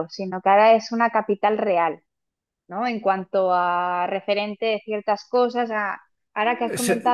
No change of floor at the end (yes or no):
yes